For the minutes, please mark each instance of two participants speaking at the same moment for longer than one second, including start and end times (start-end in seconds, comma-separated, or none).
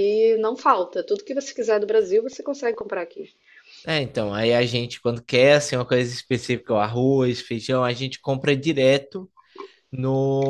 none